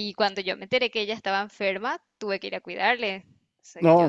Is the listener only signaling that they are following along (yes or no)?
no